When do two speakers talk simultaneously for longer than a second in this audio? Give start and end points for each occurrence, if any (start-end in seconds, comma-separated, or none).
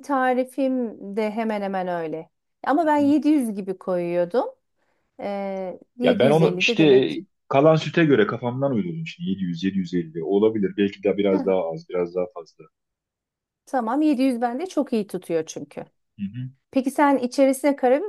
6.0-7.2